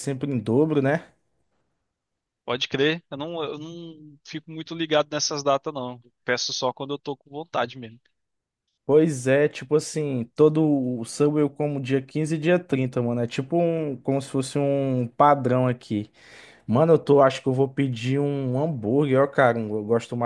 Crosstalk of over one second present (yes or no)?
no